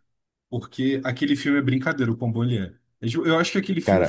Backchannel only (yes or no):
yes